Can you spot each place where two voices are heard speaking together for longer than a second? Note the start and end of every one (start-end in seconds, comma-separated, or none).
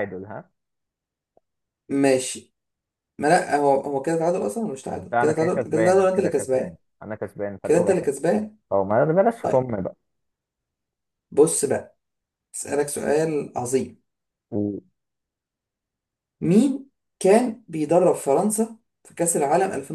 5.1-6.8